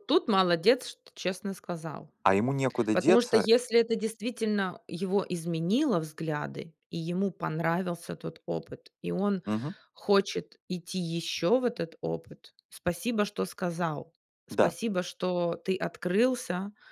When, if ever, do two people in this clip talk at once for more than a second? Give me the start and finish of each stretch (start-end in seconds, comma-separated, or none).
none